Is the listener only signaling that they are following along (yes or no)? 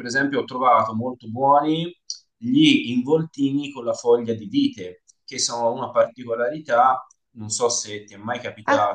no